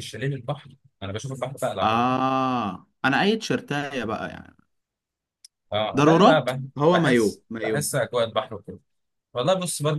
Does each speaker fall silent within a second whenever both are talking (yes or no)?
no